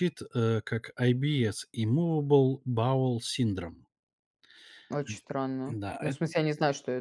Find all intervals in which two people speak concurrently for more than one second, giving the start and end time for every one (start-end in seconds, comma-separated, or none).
none